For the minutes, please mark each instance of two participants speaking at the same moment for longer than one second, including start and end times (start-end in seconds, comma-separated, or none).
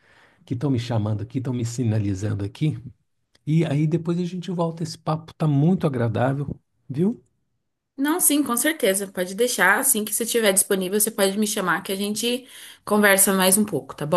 none